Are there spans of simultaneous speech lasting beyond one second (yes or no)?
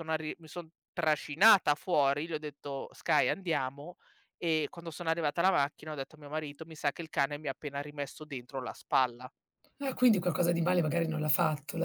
no